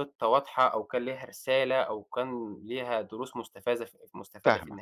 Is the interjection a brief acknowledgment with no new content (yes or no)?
no